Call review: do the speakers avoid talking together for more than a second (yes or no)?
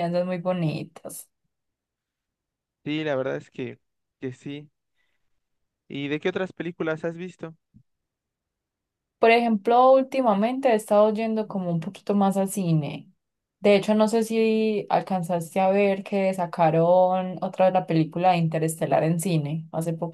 yes